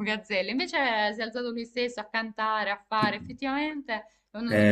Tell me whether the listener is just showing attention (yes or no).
no